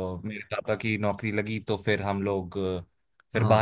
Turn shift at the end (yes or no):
no